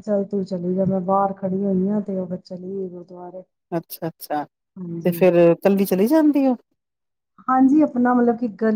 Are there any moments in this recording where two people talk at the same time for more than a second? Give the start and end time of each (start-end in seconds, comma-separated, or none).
none